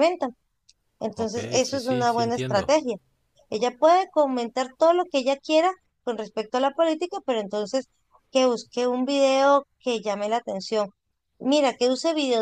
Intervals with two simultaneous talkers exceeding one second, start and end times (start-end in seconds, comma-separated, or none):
1.1-2.8